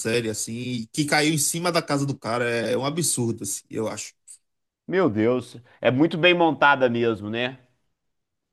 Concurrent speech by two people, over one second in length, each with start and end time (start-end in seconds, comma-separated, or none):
none